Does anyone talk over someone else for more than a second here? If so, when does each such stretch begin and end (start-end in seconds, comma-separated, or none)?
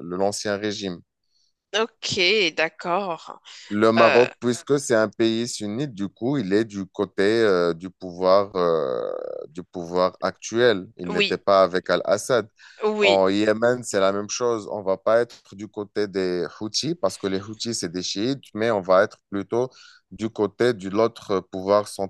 none